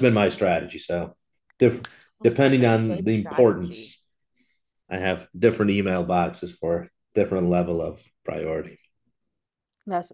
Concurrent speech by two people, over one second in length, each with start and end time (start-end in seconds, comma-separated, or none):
2.2-3.9